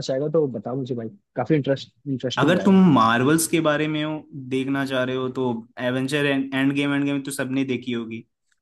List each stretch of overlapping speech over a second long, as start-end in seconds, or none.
none